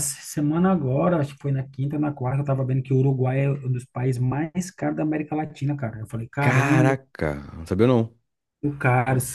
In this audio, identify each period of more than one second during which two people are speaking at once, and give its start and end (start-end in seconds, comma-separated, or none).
none